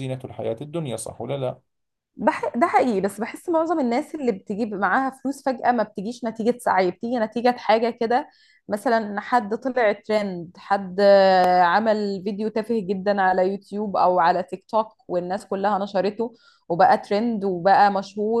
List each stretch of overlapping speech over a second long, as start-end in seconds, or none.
none